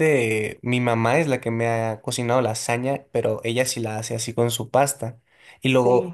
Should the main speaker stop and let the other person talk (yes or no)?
no